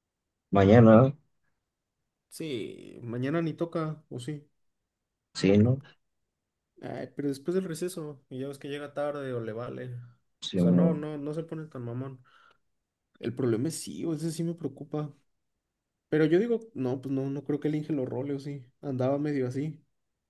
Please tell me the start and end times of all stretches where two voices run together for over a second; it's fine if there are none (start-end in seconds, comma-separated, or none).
none